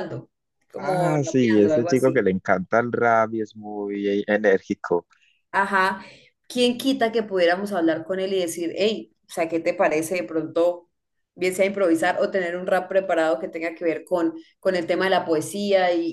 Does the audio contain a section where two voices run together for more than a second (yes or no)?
yes